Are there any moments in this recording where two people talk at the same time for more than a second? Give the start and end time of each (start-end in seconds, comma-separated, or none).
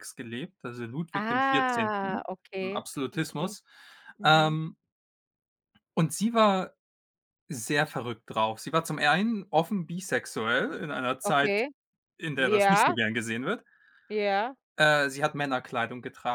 1.1-3.5